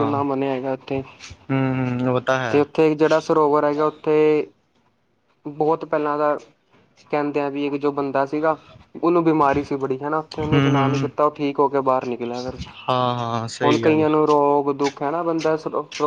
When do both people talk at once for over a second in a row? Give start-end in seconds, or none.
none